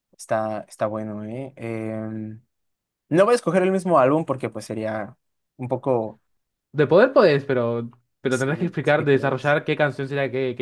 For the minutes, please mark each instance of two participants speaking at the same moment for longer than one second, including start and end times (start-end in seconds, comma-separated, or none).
8.3-9.6